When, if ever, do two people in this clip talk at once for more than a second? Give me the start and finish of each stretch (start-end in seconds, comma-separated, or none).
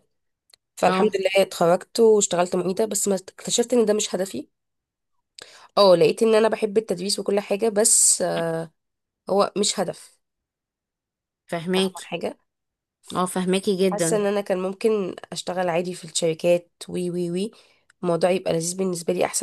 none